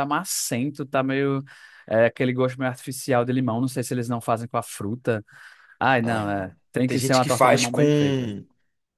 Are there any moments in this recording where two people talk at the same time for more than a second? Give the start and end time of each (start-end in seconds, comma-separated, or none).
6.0-7.8